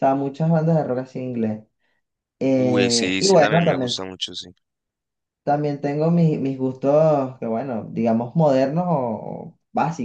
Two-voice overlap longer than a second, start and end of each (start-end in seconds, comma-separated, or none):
2.5-3.9